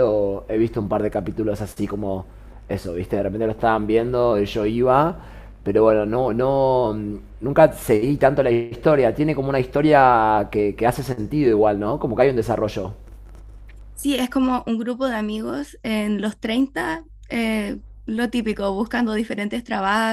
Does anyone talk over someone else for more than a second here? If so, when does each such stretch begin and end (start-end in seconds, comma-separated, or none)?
none